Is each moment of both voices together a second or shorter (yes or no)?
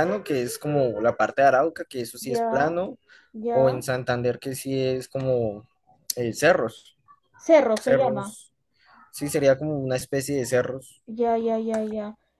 yes